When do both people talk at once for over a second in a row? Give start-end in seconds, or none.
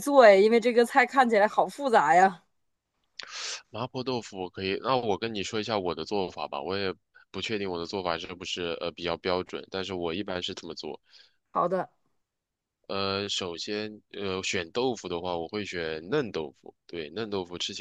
none